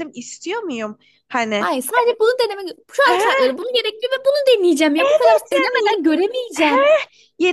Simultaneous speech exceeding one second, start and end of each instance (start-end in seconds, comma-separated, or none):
none